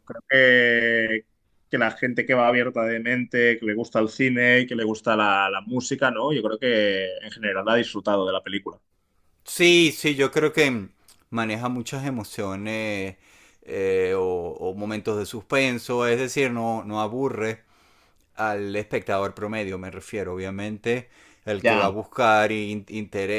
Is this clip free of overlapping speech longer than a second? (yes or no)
yes